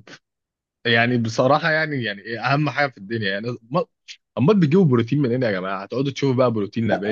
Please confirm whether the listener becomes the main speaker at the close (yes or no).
yes